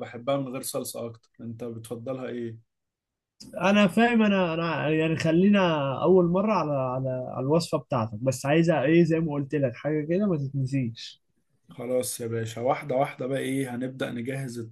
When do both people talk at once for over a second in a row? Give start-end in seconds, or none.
none